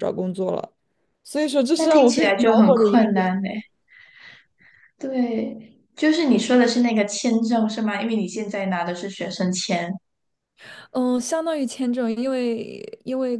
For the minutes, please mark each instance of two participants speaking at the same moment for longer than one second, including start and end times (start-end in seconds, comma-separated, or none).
1.7-3.4